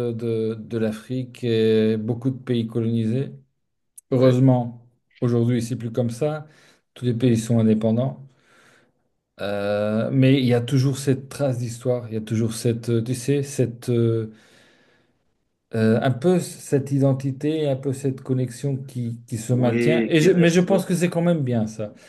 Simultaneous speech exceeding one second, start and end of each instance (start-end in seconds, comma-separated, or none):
19.5-20.8